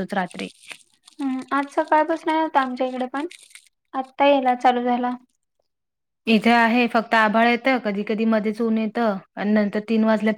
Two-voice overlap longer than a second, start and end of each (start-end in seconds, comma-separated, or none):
none